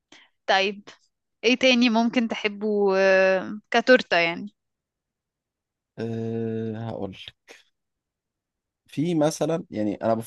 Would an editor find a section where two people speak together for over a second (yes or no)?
no